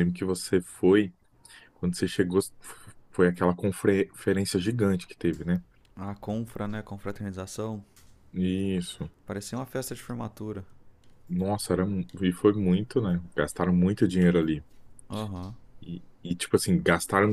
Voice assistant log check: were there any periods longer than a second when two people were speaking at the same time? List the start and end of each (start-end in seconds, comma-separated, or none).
none